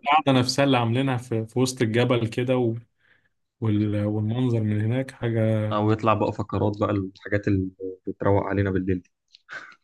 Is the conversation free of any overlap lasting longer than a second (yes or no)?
yes